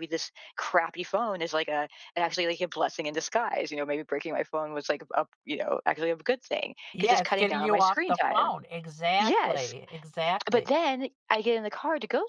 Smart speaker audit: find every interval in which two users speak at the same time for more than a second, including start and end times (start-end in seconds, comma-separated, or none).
6.9-8.5